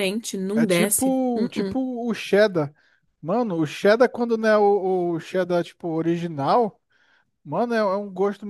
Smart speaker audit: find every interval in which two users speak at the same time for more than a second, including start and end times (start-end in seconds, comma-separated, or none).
0.5-1.8